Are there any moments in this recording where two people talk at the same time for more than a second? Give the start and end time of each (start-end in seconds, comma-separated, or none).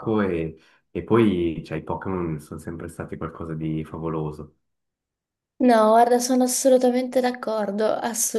none